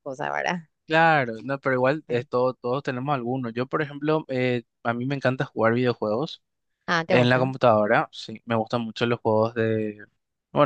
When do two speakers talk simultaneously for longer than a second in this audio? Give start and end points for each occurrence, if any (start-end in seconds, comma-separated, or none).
none